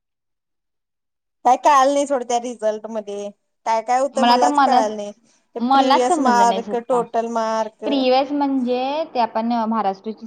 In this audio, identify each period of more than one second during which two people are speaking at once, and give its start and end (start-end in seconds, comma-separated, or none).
5.7-7.0